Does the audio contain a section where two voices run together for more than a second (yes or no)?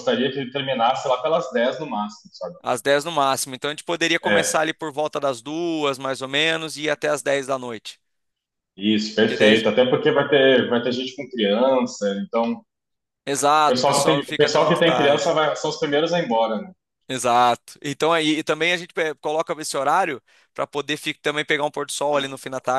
yes